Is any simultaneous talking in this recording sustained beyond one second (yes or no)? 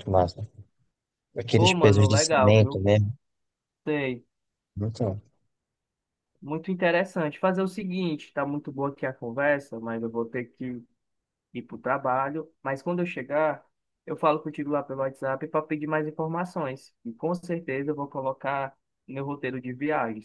yes